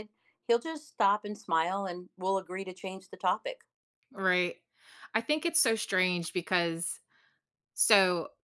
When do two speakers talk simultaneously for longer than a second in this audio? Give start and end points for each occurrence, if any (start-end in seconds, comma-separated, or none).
none